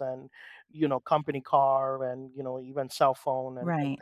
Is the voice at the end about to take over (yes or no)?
yes